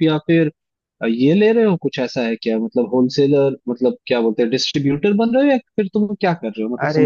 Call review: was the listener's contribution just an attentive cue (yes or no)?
no